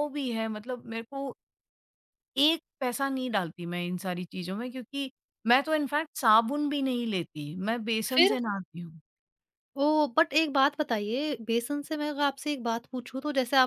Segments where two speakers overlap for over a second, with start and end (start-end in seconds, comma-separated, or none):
none